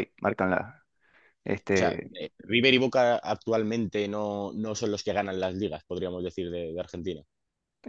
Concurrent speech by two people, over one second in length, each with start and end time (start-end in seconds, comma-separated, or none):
none